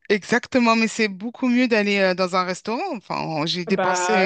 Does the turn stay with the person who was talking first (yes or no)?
no